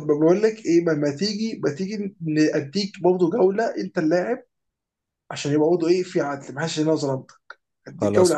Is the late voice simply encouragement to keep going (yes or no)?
yes